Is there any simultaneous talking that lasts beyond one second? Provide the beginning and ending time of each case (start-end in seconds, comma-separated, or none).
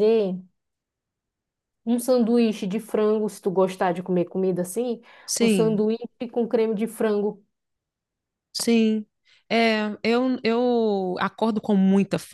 none